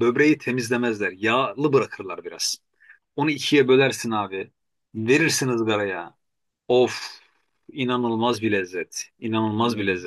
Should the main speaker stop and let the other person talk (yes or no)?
no